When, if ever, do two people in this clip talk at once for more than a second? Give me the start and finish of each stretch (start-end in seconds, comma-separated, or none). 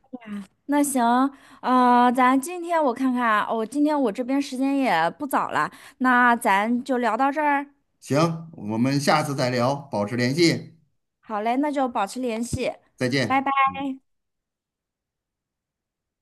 none